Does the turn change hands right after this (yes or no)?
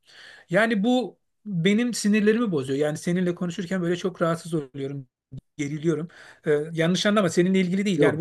no